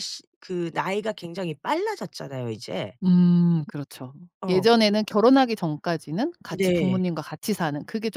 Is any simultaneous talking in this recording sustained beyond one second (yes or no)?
no